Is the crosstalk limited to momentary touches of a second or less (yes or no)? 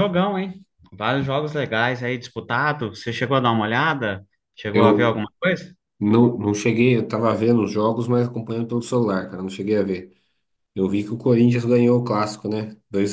yes